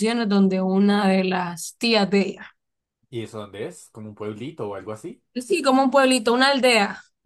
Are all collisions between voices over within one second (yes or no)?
yes